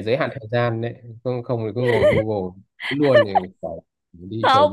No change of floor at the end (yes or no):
no